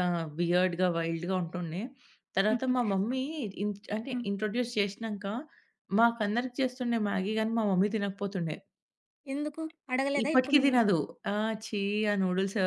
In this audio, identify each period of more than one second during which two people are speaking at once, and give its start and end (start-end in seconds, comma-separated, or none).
none